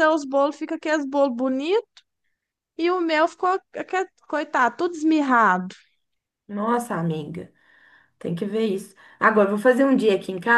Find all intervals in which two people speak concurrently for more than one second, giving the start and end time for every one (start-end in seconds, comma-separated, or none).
none